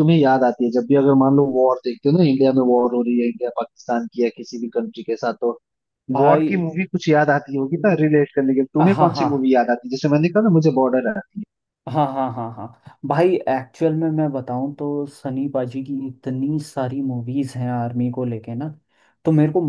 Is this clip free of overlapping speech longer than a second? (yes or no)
yes